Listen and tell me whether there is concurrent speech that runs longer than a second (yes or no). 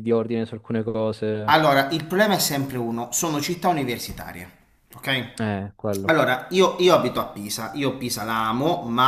no